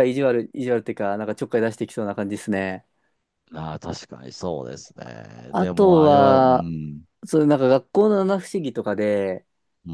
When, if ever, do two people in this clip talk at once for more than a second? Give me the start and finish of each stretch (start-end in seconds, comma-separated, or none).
5.5-6.7